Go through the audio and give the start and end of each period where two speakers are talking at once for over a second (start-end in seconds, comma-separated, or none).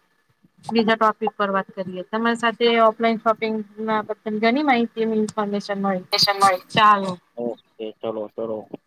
none